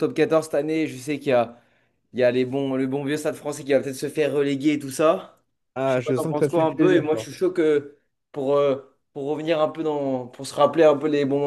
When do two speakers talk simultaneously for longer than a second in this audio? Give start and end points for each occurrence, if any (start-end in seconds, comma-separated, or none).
5.8-7.3